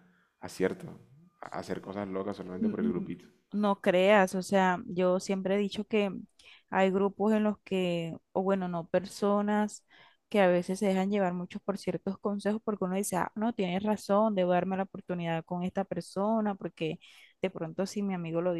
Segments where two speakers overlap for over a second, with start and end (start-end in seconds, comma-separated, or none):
none